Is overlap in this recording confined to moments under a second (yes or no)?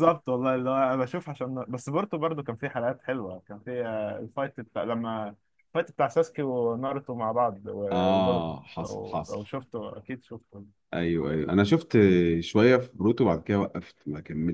no